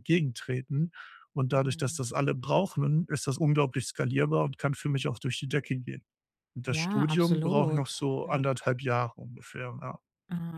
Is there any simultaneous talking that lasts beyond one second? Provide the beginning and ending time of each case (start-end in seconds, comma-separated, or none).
6.6-8.4